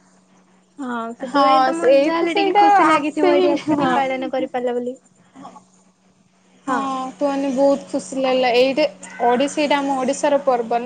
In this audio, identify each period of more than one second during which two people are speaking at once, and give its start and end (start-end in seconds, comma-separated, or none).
1.3-3.9